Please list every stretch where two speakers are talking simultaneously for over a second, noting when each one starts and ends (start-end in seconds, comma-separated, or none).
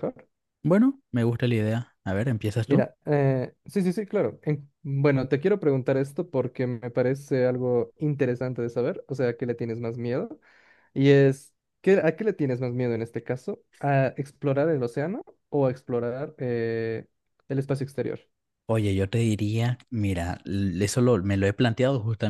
none